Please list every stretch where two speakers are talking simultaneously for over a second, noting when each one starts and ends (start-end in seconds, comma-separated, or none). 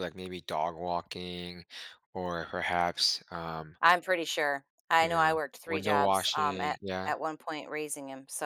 5.0-7.1